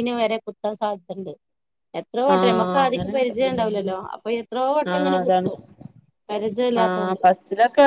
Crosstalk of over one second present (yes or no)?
yes